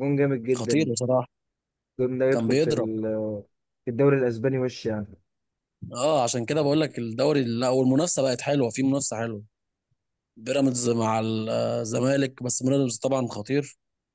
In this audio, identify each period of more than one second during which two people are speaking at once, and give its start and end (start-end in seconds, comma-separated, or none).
none